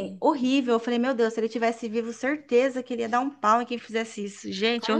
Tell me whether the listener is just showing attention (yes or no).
no